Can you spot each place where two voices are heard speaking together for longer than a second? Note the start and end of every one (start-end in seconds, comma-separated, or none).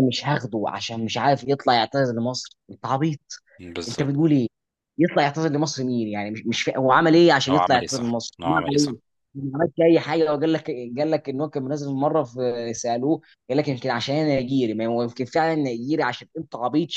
7.5-8.9